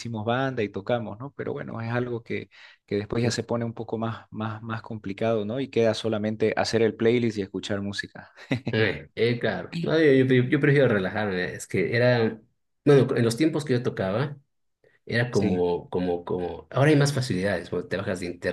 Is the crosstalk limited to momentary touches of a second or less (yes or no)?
yes